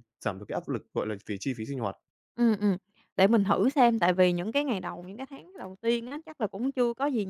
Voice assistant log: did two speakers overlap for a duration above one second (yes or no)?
no